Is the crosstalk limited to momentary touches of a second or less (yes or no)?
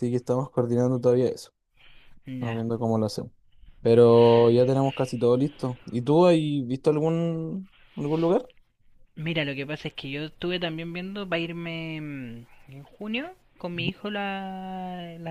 yes